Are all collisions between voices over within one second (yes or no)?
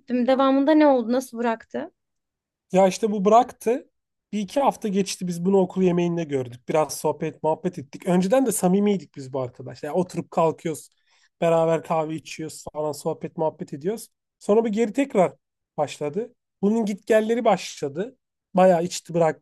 yes